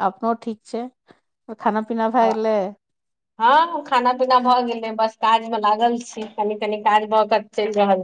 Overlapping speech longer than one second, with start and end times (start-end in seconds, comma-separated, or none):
none